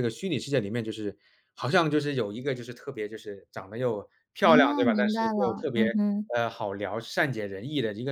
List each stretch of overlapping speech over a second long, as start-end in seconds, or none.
4.4-5.9